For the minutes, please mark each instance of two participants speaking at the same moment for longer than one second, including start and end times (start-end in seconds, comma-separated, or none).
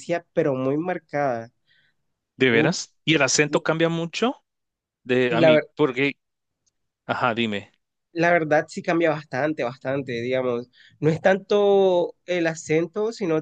none